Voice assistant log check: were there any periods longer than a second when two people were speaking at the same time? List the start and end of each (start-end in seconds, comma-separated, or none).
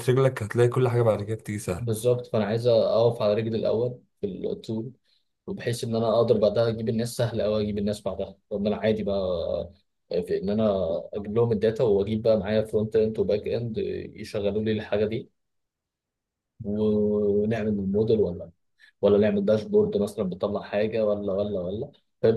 none